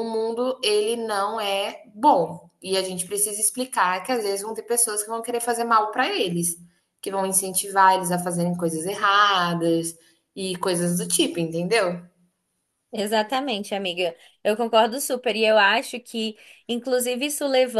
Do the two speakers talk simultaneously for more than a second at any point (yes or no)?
no